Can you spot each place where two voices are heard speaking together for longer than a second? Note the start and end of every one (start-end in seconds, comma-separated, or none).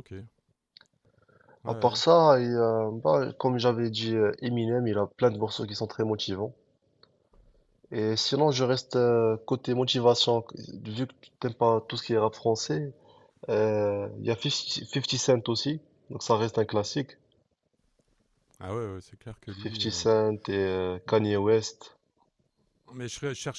none